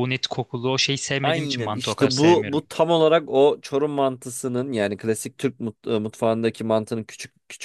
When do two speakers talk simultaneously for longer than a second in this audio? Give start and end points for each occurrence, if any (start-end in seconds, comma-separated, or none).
1.2-2.6